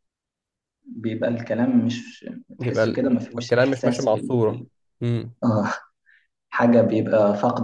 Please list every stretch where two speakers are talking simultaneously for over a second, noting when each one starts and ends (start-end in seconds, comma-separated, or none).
2.6-4.7